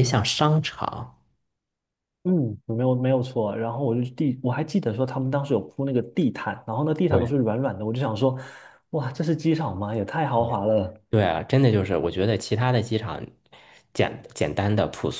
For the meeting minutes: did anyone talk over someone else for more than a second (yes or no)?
no